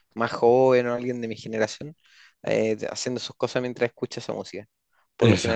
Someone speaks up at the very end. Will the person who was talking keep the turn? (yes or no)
yes